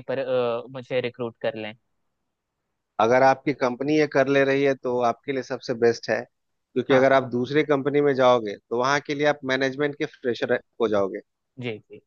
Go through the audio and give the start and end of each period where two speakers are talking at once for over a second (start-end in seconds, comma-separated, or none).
none